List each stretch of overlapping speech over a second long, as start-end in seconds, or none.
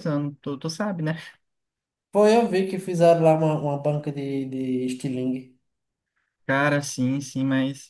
none